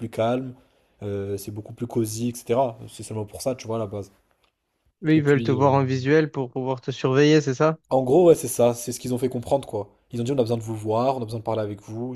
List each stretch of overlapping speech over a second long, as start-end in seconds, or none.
none